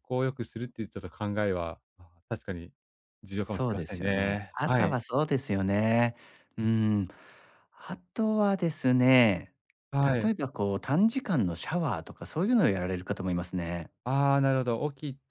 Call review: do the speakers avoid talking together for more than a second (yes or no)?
no